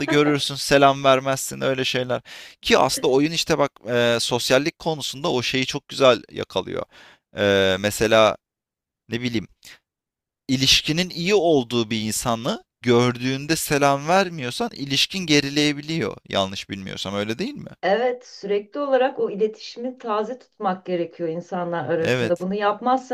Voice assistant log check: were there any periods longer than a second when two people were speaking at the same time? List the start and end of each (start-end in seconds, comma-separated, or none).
none